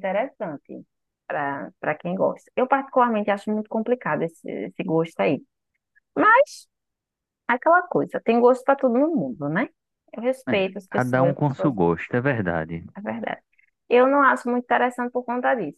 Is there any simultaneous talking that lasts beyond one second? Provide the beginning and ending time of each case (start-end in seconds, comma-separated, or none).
10.5-11.8